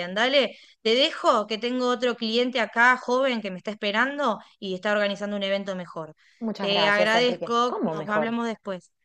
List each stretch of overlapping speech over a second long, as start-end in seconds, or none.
6.6-8.3